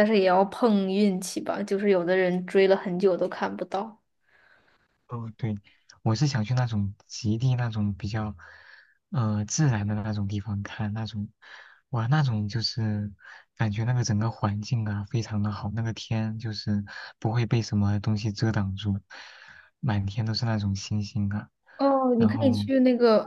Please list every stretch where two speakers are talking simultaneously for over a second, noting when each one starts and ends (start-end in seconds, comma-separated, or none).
none